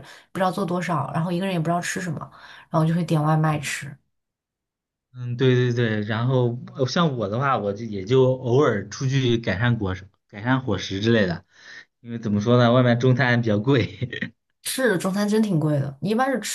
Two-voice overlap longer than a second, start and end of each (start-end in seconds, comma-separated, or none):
none